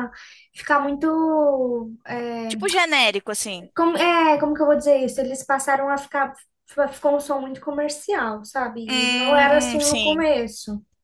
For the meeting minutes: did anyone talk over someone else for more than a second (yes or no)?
yes